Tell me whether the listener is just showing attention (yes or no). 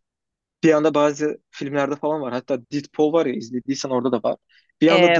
yes